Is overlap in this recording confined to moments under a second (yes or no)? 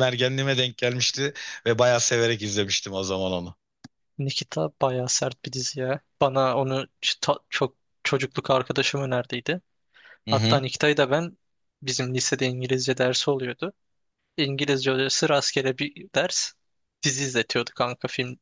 yes